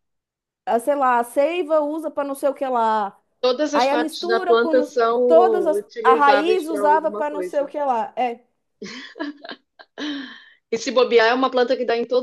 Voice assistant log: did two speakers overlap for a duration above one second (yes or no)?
yes